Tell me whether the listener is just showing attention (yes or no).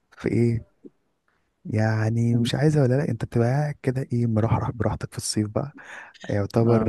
yes